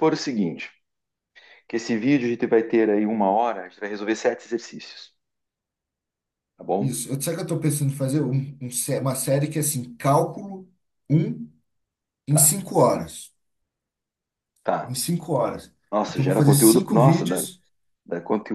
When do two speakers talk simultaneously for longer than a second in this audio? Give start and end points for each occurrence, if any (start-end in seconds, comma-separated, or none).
15.9-17.5